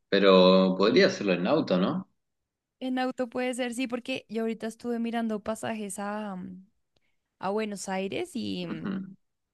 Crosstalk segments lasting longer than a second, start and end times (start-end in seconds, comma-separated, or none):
none